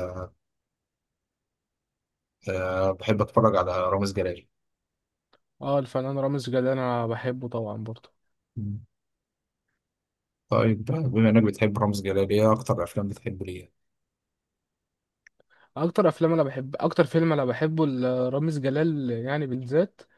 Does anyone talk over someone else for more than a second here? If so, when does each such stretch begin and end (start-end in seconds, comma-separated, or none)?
none